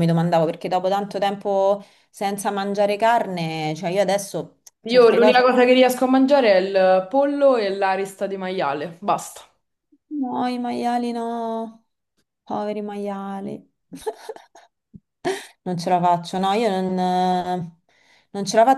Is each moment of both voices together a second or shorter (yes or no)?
yes